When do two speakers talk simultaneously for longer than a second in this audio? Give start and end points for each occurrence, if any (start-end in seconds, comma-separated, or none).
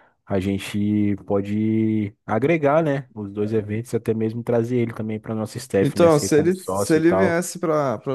5.8-7.4